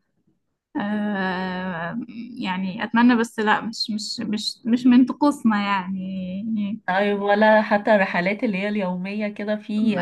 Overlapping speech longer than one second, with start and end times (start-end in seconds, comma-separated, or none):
none